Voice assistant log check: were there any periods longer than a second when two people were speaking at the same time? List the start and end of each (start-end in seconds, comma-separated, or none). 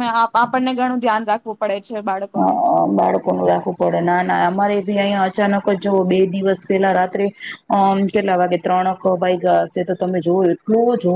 none